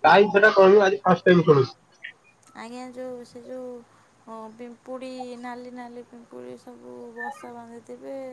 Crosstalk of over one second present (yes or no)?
no